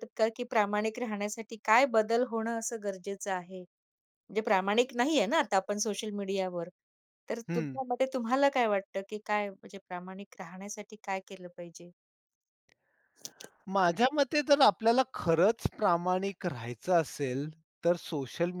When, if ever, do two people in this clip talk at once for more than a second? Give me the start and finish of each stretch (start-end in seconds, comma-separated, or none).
none